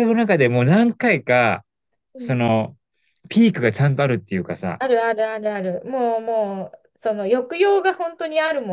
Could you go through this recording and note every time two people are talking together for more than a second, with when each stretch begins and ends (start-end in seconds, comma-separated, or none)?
none